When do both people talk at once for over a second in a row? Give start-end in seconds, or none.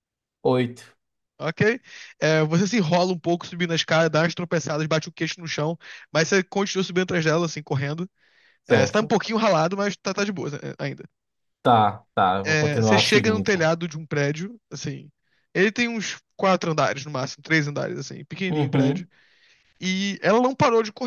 12.4-13.7